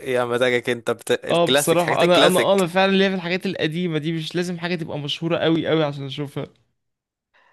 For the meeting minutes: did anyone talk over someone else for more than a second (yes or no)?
yes